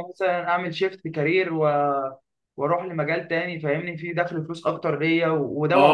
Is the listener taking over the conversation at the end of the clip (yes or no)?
yes